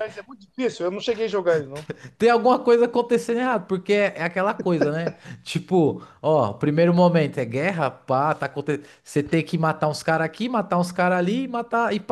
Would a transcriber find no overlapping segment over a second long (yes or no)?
yes